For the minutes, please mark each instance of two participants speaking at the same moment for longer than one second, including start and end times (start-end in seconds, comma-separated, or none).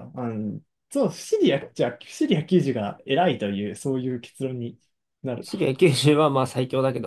none